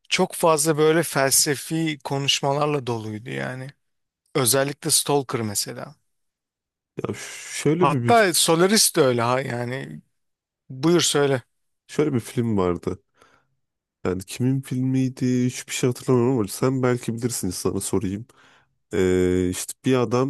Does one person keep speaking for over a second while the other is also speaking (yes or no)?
no